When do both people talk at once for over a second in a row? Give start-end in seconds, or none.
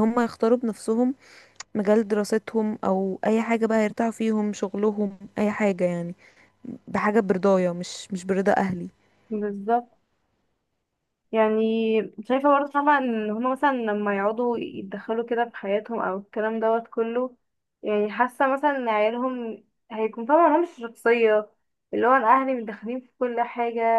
none